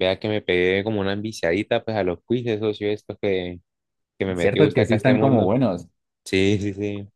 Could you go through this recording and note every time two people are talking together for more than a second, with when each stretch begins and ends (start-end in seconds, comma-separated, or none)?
4.3-5.5